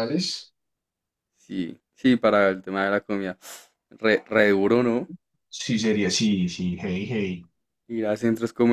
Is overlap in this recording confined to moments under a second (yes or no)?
yes